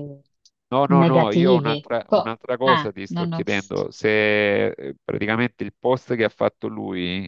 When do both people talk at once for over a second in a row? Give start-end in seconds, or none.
0.8-3.4